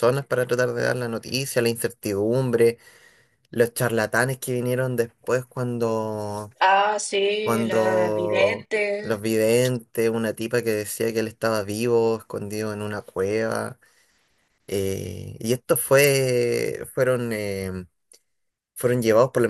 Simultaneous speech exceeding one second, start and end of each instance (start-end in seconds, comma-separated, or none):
7.4-9.2